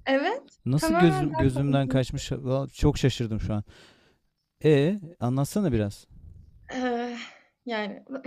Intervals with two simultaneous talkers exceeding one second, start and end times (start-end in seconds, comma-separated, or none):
0.7-2.1